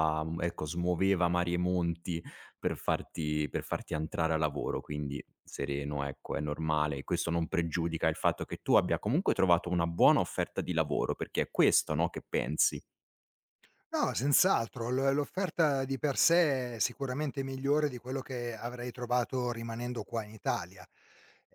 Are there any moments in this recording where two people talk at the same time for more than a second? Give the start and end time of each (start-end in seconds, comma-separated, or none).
none